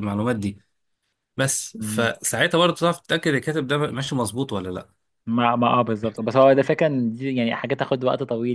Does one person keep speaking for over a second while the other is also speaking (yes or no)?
no